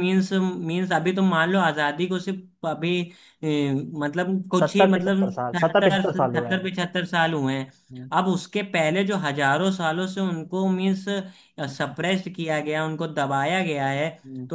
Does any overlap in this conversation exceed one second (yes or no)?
yes